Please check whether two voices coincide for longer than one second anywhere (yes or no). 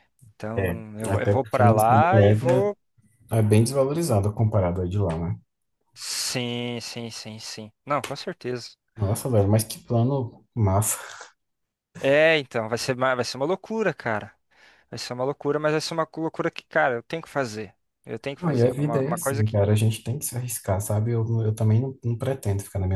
yes